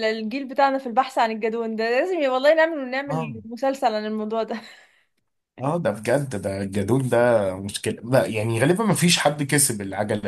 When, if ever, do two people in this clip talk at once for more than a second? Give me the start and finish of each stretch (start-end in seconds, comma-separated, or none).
none